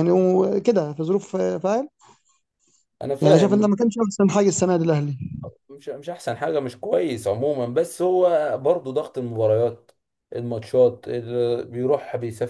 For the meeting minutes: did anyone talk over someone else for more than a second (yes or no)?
no